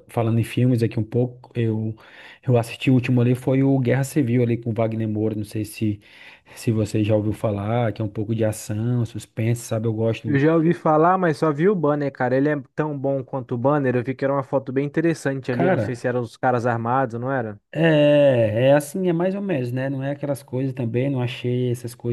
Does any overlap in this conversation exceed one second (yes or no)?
no